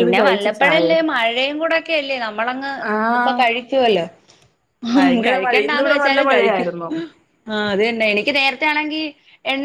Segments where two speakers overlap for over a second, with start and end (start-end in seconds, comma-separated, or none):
5.0-6.7